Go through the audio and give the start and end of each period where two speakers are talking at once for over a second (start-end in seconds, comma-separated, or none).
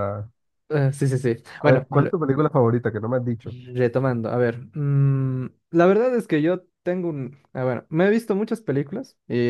none